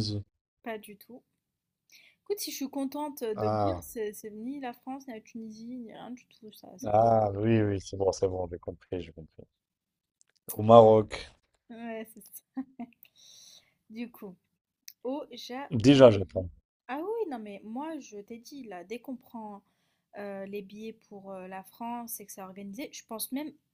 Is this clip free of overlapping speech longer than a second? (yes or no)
yes